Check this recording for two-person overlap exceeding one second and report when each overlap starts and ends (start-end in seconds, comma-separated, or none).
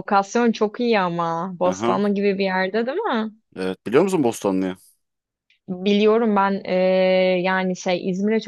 none